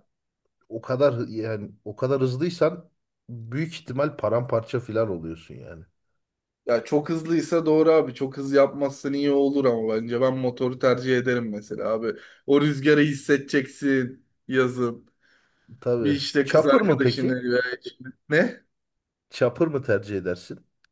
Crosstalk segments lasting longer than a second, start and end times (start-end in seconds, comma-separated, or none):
16.0-17.4